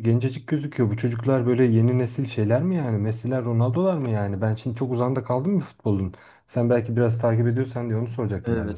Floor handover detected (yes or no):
yes